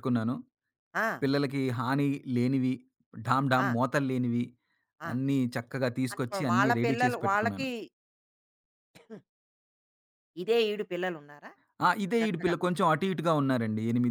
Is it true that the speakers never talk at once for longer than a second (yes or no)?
no